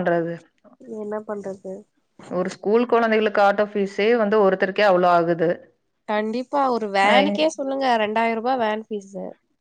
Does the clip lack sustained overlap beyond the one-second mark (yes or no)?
yes